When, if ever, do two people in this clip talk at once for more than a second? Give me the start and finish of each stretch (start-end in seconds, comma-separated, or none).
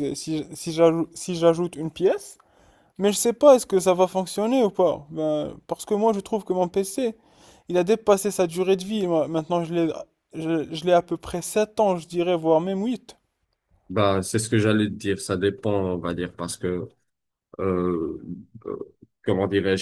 none